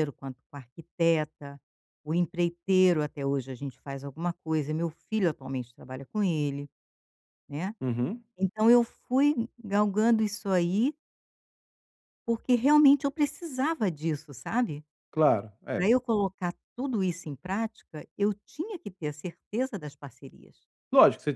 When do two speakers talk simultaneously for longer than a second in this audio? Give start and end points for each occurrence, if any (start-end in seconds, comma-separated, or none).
none